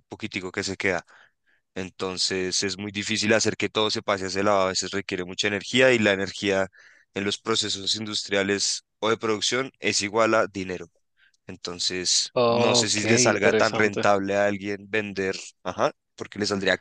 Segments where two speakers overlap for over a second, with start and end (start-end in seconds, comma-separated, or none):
12.3-14.1